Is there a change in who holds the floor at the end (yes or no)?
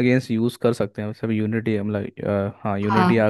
no